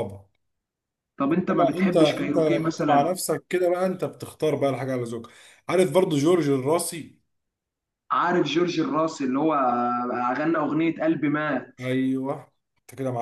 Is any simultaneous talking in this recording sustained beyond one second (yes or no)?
yes